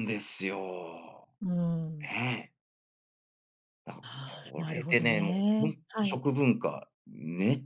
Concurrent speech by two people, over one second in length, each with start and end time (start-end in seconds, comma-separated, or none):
4.4-6.2